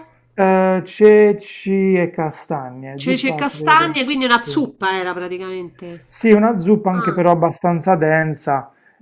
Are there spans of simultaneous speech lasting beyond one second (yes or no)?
yes